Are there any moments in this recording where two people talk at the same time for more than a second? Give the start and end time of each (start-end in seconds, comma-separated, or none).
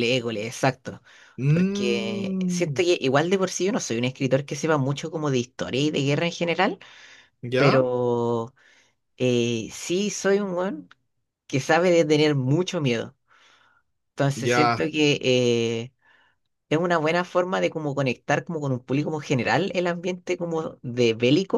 1.5-2.8